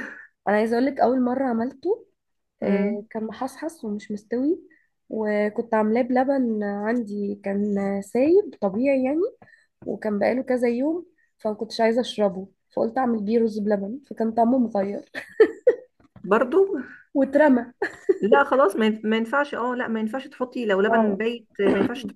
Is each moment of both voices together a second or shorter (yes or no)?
yes